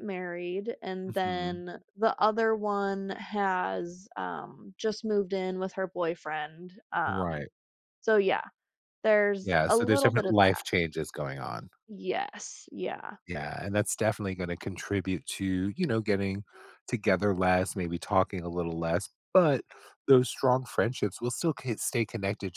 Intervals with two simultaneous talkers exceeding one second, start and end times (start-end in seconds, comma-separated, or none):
9.4-10.6